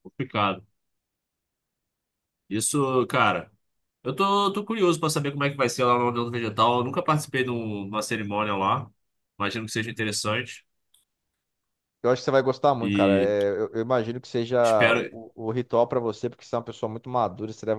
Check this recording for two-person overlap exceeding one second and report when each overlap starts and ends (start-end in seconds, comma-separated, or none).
none